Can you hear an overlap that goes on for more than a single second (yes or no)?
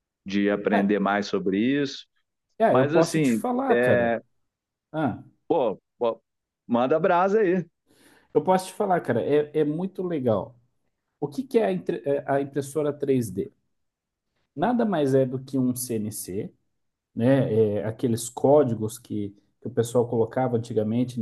yes